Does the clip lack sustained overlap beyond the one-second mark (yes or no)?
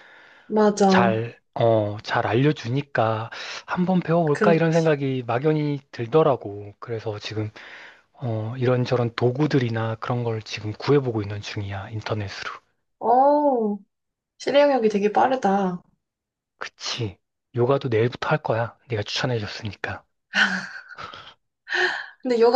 yes